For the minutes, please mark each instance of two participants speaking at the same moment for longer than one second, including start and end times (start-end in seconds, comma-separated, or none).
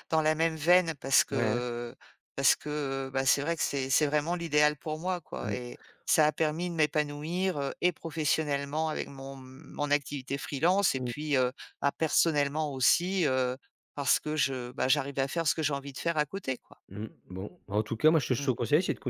none